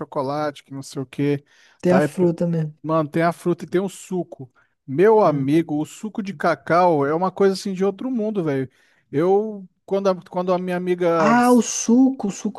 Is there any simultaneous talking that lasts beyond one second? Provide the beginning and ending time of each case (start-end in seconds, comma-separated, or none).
none